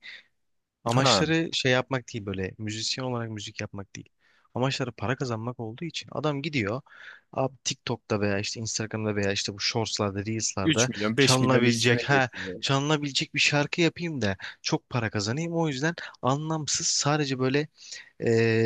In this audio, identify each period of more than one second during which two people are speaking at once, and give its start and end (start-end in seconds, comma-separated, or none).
10.6-12.6